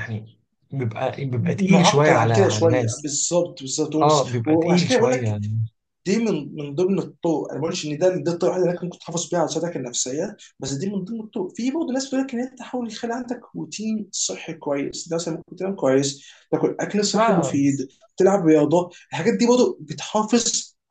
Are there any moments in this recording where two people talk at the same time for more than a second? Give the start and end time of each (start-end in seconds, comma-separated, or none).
1.7-3.1, 4.0-5.4